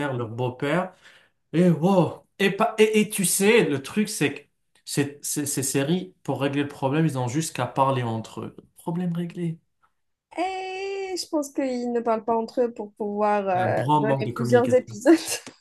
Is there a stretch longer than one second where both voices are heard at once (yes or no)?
yes